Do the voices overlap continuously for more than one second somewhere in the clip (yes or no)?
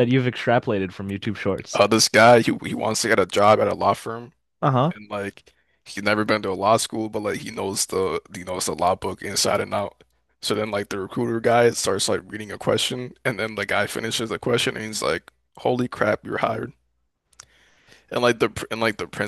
no